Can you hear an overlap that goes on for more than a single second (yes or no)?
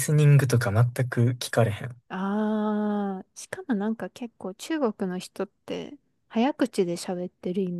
no